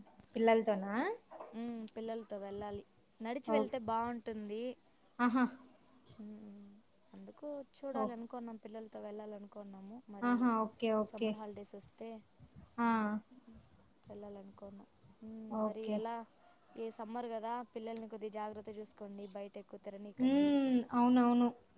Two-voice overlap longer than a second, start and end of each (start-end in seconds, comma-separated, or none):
none